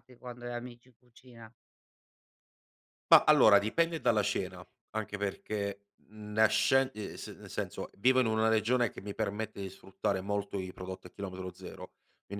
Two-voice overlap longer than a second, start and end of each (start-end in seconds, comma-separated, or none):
none